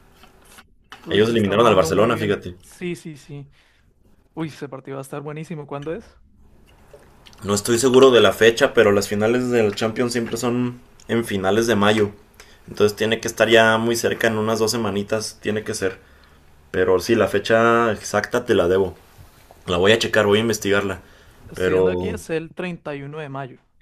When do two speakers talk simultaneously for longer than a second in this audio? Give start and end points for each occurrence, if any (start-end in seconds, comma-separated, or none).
1.1-2.6